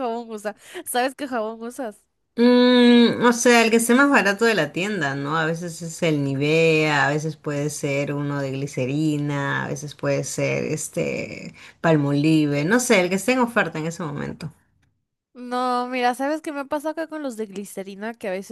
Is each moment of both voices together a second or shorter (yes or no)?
yes